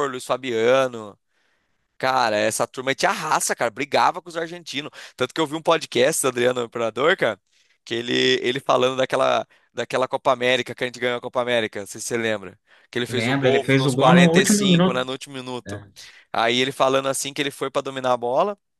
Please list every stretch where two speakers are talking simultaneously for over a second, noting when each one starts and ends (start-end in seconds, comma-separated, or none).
13.1-15.0